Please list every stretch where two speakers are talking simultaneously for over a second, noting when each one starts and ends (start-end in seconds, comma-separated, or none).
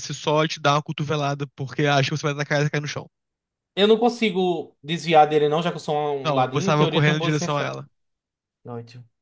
6.2-7.8